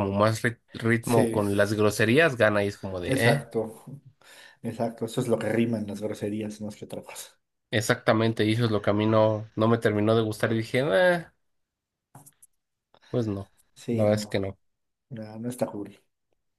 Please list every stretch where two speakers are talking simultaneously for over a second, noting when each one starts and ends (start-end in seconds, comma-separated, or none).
none